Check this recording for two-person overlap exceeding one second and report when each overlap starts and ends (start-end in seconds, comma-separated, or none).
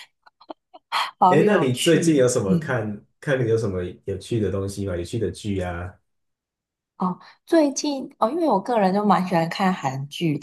1.3-2.8